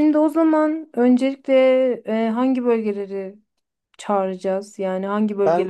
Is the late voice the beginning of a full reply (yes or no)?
yes